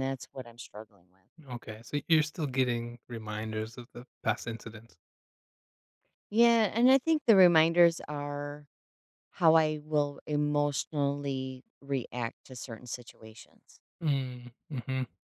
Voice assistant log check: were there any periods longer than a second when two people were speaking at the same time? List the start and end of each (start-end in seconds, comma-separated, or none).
none